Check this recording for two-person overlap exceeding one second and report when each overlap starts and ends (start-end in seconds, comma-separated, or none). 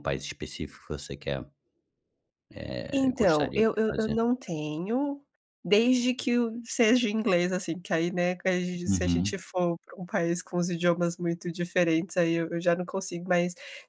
2.9-4.2